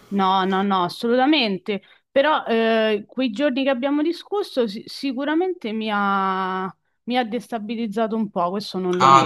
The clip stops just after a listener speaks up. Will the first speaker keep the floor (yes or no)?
no